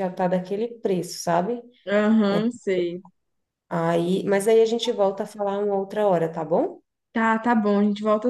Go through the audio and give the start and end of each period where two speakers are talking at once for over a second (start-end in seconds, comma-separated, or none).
none